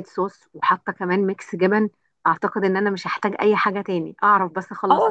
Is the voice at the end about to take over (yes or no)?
yes